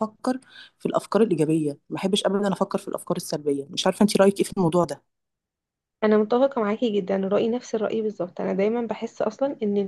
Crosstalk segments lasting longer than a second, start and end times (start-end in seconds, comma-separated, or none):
none